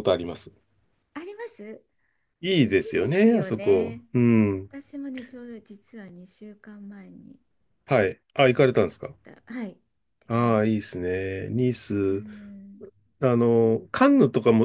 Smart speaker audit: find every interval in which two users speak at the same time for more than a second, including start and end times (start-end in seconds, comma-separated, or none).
2.7-4.0